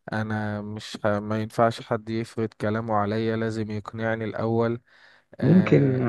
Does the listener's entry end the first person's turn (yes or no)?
yes